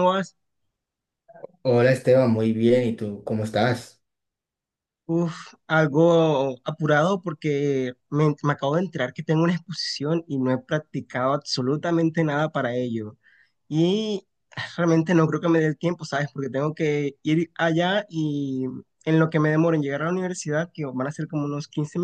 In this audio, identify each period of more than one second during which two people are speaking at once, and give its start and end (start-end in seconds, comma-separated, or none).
none